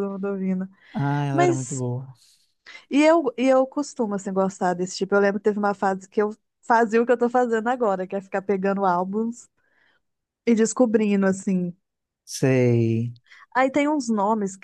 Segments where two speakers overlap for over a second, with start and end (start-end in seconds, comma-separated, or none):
none